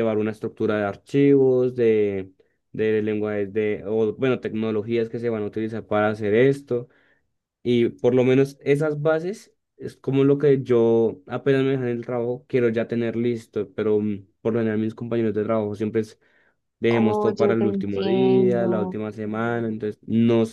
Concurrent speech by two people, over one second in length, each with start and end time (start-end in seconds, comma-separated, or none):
16.9-18.9